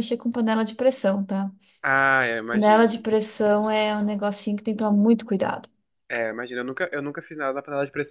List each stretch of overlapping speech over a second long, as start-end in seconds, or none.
none